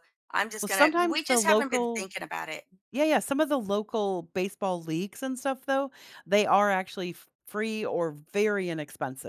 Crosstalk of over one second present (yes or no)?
yes